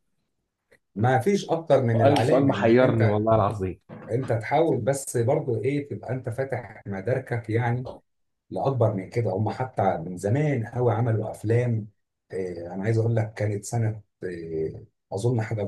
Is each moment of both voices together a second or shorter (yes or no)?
no